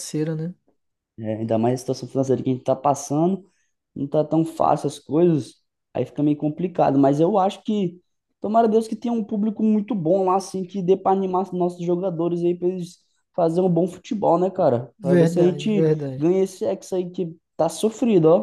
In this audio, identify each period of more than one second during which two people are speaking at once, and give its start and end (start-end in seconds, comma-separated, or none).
15.0-16.3